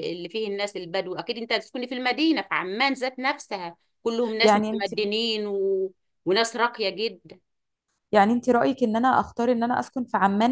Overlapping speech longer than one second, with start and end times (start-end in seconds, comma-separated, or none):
none